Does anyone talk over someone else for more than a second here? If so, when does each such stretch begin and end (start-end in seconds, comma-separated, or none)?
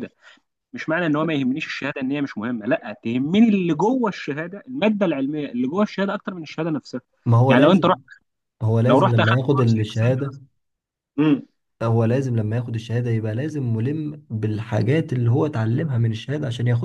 8.9-10.4